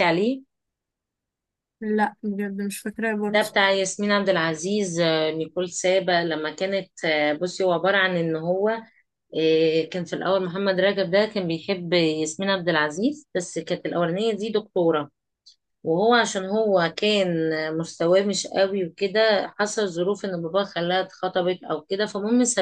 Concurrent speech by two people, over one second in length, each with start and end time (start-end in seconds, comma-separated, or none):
none